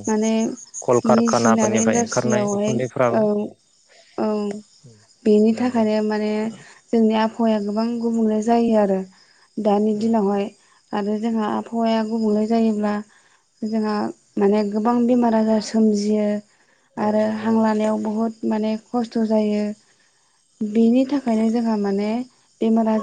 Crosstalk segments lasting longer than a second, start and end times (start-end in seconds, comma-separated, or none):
1.2-2.8